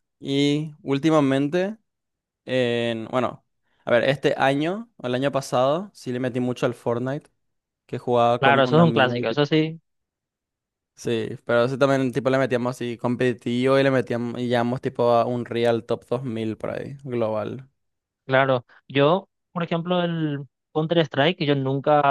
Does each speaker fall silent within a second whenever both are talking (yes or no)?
no